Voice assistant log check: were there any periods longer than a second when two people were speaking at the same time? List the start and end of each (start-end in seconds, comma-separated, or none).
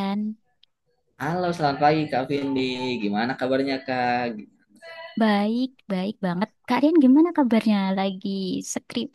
none